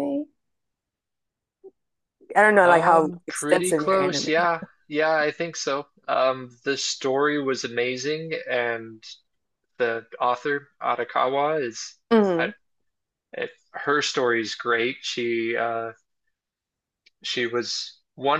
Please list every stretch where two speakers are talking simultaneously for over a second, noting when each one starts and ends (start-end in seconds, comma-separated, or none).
2.6-4.2